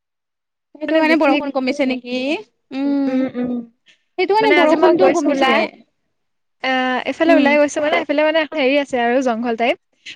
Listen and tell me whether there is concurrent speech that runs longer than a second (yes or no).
no